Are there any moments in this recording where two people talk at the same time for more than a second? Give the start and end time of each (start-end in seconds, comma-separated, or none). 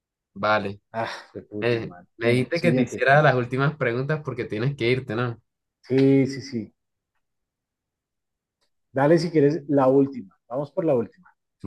1.6-3.1